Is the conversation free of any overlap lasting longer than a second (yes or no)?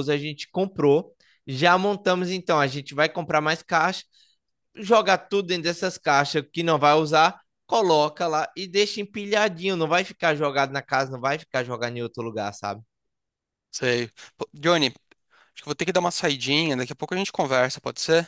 yes